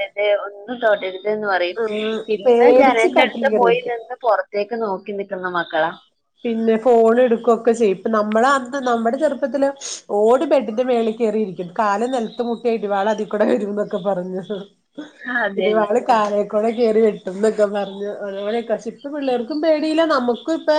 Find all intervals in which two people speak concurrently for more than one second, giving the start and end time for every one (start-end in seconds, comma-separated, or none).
2.4-4.0